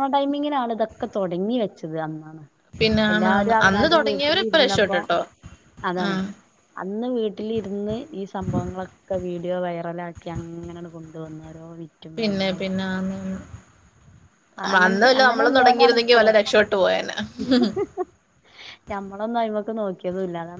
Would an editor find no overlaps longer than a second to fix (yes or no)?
no